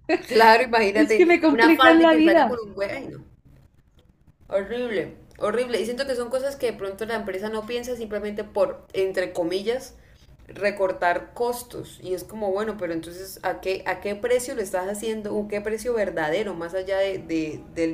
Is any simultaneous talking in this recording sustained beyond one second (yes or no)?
yes